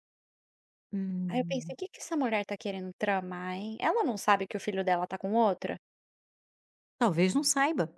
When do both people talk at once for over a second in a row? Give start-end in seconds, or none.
none